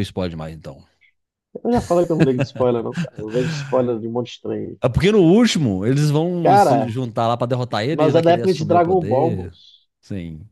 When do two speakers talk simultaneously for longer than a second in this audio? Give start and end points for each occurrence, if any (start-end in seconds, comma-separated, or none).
7.9-9.5